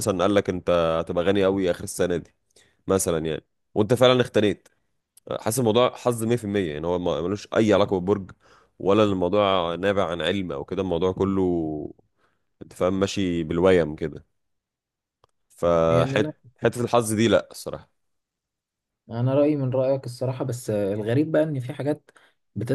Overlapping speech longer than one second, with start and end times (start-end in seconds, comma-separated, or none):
none